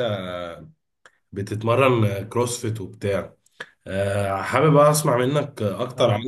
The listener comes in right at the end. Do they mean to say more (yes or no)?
no